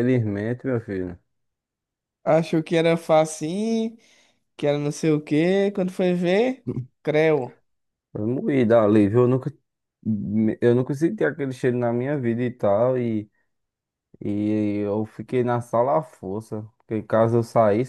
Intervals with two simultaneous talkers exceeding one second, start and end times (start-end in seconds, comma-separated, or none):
none